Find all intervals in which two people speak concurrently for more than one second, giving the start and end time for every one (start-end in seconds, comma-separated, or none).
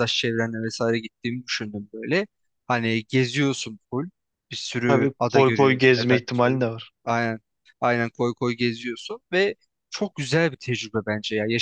4.9-6.6